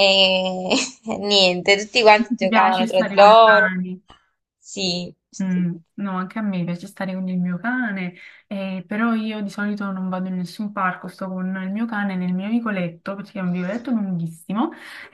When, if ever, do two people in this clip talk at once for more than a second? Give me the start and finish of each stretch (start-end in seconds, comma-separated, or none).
2.4-3.7